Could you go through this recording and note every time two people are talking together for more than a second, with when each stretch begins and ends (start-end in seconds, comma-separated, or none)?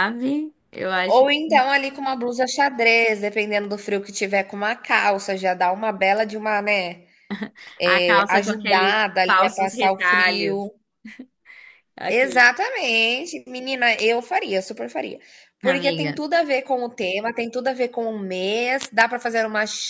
7.9-10.7